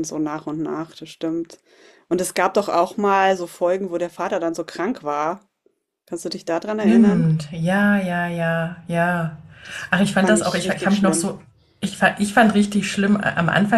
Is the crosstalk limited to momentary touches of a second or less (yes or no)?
no